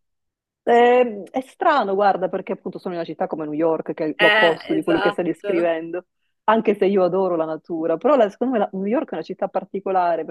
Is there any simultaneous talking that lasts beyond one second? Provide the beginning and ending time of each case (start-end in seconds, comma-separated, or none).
4.2-5.7